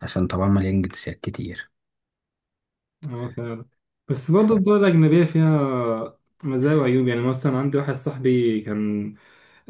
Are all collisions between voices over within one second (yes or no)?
yes